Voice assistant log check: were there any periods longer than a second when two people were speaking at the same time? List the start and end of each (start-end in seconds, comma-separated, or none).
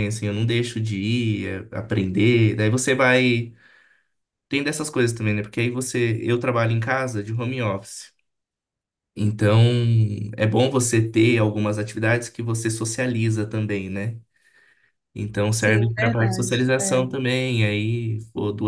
15.5-17.1